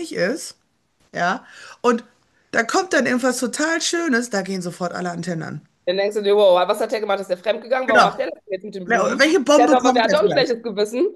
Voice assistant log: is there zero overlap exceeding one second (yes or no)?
no